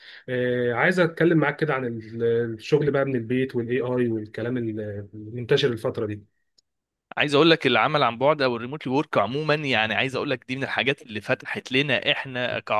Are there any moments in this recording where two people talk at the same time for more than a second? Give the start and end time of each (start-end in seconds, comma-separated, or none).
none